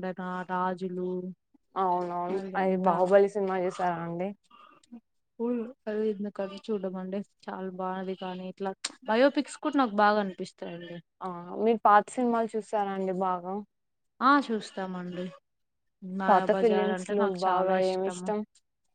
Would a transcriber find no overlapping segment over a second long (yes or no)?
no